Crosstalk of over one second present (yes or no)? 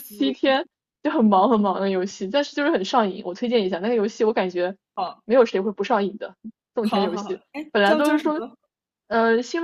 yes